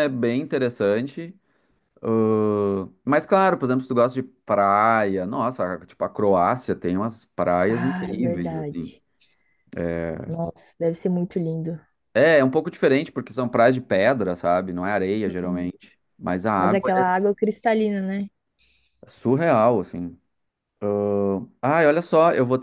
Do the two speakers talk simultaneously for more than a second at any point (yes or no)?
yes